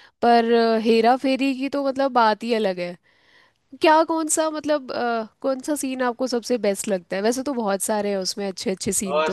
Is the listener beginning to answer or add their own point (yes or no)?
yes